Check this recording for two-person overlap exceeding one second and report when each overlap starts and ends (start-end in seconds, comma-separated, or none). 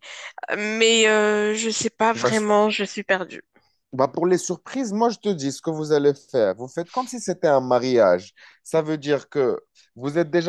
none